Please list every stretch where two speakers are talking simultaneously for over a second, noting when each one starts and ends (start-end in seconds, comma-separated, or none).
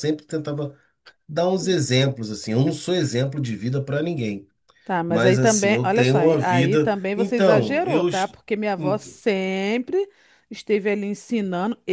5.1-8.4